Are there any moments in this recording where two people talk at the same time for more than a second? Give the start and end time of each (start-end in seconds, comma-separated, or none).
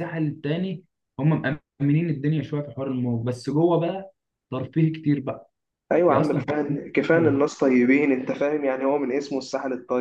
6.1-7.4